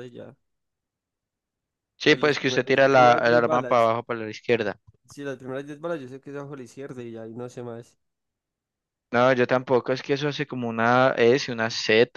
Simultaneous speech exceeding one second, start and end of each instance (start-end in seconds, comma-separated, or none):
2.1-3.9